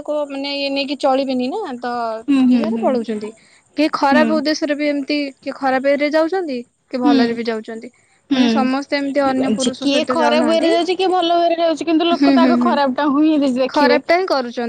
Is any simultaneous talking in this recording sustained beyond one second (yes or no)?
yes